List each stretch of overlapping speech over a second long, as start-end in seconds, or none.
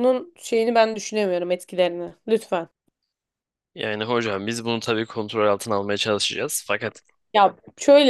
none